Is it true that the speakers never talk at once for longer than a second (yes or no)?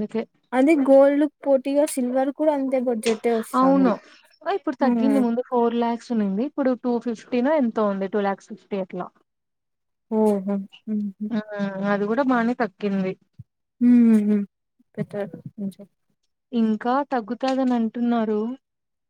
yes